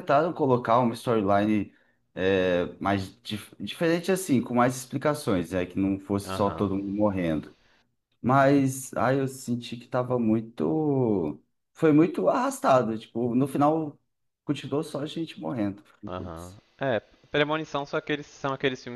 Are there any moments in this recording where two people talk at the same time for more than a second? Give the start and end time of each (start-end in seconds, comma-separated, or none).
none